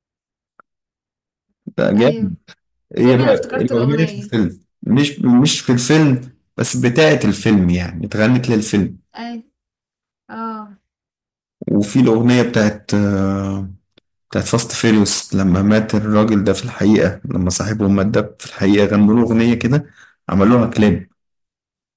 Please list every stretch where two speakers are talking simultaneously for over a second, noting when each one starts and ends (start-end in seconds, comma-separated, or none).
3.0-4.3